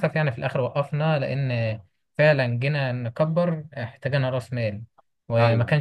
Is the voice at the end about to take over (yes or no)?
no